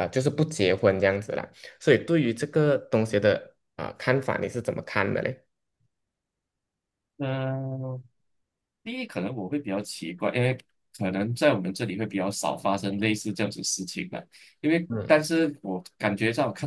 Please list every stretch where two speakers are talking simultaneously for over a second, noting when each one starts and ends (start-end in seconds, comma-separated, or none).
none